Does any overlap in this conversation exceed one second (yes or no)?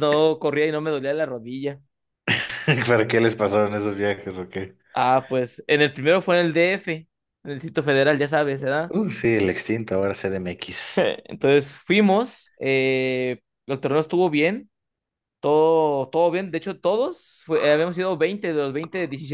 no